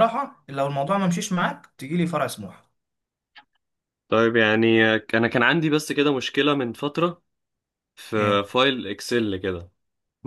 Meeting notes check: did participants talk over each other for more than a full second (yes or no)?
no